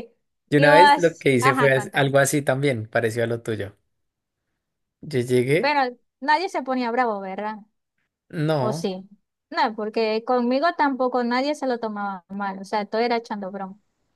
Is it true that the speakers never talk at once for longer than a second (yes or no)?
no